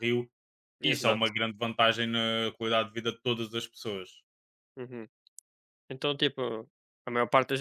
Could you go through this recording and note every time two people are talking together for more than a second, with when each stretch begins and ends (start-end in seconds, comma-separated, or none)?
none